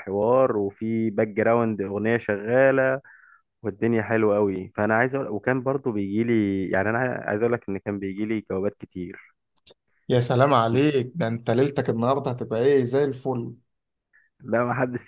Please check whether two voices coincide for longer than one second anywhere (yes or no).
no